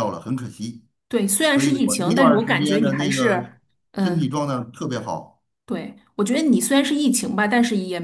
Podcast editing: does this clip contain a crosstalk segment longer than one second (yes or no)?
yes